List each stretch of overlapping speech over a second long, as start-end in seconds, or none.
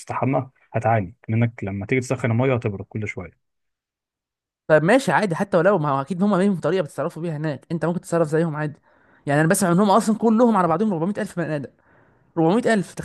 none